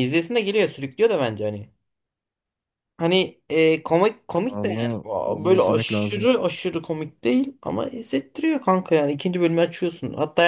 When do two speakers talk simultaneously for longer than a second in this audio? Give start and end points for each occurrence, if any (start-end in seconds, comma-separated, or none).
4.4-6.3